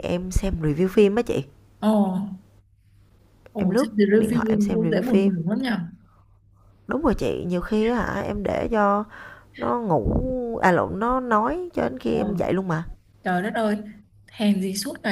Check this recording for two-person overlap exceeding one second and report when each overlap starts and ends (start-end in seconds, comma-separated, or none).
3.6-5.3